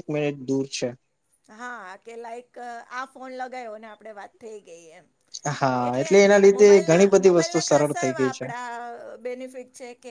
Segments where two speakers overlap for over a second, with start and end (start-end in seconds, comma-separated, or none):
6.6-8.5